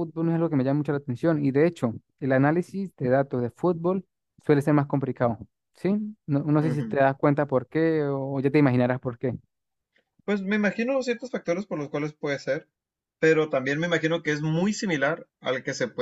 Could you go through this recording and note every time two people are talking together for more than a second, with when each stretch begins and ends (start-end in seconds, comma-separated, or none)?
none